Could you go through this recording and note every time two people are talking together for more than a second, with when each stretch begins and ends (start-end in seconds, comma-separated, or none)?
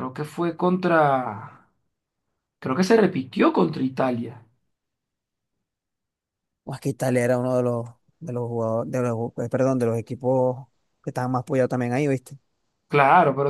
none